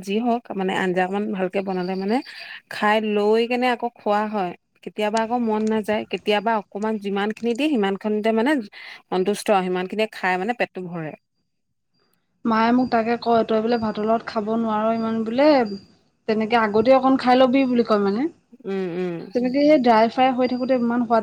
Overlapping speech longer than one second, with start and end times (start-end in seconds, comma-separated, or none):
none